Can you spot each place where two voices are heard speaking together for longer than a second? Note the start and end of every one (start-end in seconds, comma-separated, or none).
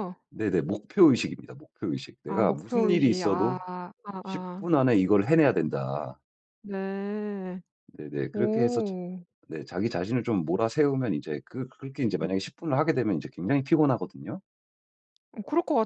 2.3-3.6